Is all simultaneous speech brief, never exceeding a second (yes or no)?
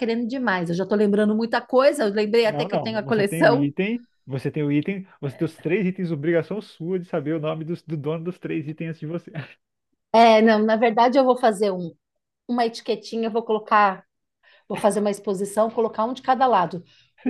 no